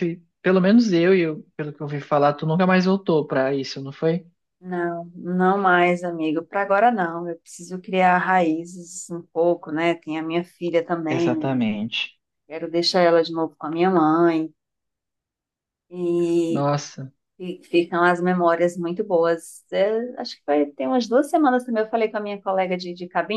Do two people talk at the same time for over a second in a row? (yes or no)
no